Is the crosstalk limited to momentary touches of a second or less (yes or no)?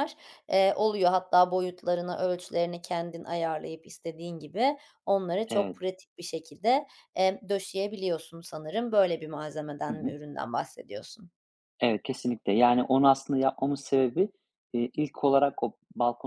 yes